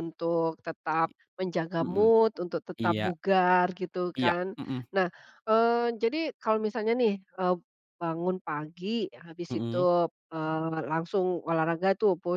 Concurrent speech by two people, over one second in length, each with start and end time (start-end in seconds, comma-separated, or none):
none